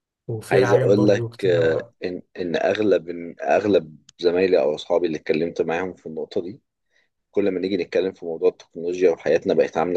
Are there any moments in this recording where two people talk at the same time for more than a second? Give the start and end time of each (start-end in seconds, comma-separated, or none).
0.5-1.9